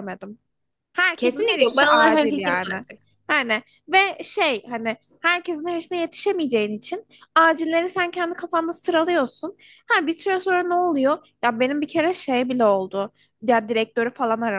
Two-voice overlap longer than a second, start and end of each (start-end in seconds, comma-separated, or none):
1.1-2.8